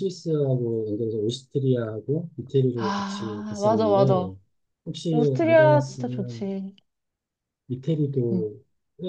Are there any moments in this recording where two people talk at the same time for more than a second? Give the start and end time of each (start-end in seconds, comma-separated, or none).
2.7-4.3, 5.1-6.5